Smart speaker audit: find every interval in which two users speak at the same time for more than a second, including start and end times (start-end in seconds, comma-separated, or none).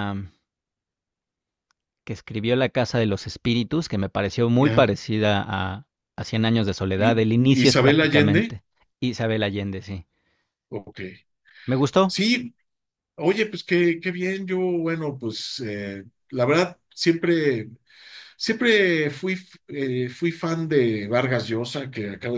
7.0-8.6